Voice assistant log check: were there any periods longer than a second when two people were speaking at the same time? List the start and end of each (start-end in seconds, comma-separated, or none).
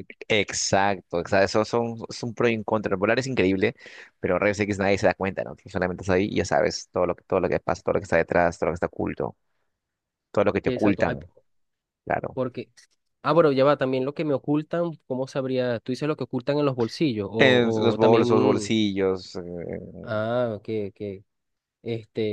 17.4-18.7